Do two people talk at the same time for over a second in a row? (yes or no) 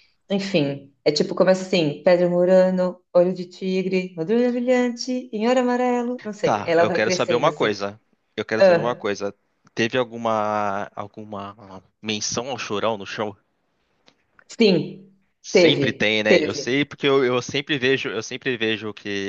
yes